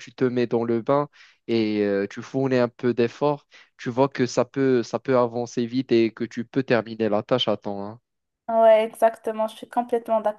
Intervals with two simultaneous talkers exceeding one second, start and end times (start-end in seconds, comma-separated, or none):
none